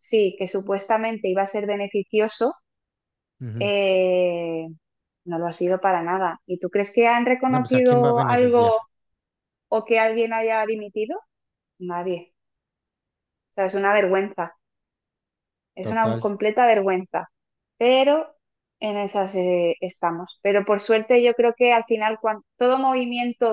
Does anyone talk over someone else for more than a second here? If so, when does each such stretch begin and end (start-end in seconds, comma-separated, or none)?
7.5-8.7